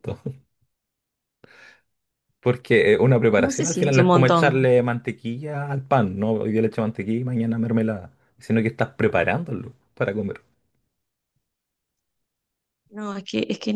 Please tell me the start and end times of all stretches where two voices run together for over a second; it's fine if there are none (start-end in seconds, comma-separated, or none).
3.4-4.7